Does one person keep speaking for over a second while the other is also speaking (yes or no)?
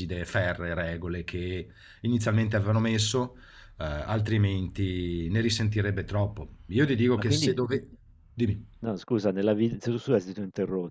no